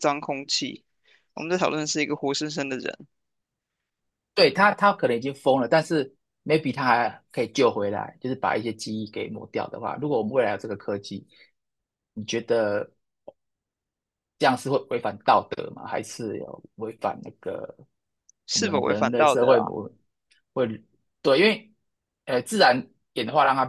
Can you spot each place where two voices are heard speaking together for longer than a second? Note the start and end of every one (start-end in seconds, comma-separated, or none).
18.5-19.7